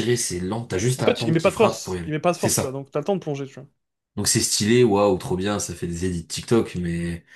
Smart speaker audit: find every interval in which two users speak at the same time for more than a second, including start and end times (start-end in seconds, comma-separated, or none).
1.0-2.8